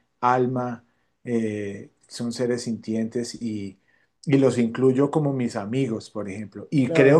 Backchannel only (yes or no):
yes